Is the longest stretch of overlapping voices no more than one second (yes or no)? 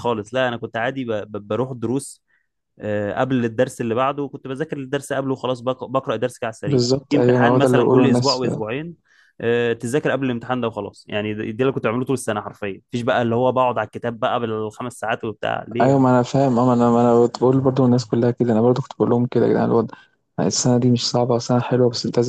no